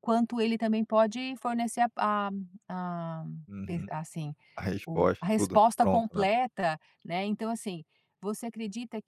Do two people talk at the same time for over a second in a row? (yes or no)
yes